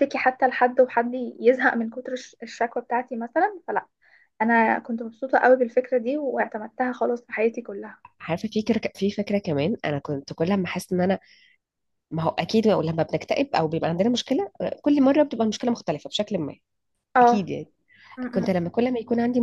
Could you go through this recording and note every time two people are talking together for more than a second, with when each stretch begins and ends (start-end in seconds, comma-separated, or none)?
none